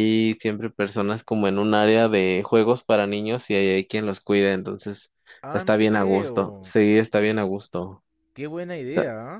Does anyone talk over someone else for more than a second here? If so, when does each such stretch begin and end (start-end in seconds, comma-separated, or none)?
5.5-6.7